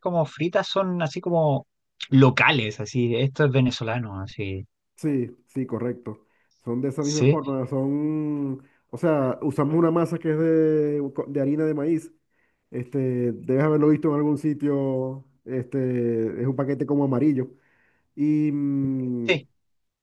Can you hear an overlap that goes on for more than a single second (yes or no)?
no